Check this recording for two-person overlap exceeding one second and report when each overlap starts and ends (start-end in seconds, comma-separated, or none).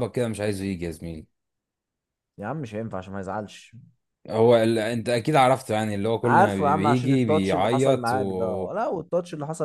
6.2-8.7